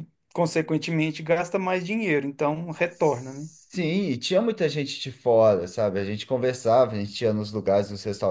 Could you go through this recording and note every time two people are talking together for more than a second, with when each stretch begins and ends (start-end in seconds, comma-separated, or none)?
none